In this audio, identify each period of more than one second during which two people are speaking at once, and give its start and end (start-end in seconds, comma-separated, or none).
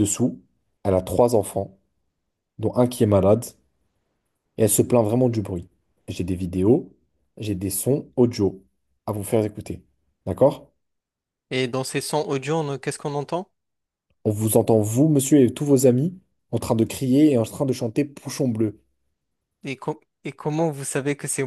none